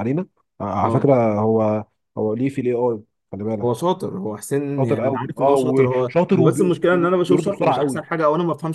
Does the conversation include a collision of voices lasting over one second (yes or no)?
yes